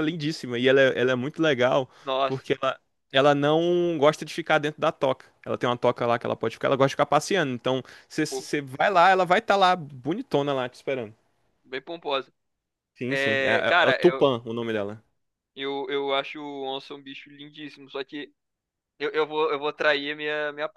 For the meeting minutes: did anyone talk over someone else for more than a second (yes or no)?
yes